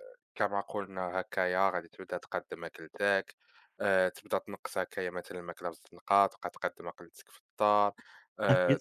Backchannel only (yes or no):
yes